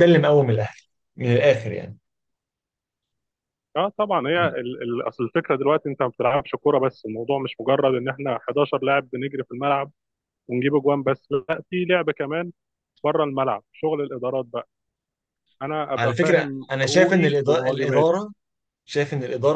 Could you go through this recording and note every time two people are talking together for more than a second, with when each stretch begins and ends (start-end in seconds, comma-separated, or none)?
16.0-18.1